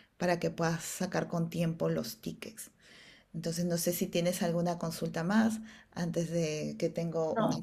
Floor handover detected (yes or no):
yes